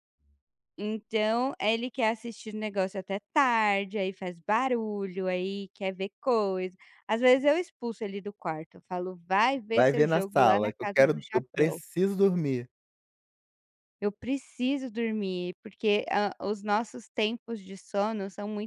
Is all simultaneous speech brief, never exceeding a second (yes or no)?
no